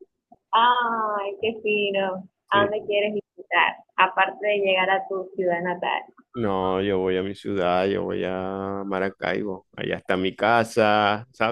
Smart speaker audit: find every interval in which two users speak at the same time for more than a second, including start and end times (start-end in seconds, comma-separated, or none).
none